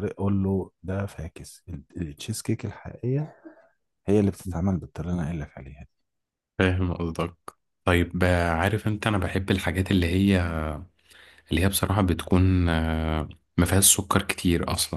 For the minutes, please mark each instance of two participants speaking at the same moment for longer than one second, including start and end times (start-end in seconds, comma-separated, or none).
none